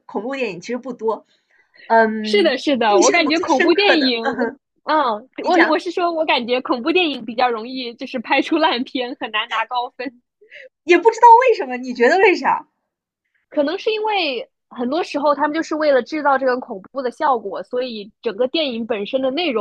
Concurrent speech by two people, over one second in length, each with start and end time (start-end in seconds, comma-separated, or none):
2.2-4.2